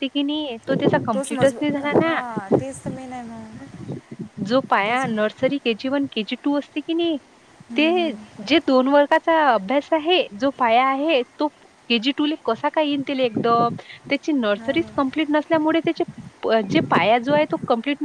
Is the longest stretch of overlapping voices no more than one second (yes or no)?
no